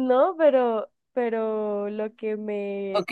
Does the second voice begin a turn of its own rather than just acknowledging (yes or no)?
yes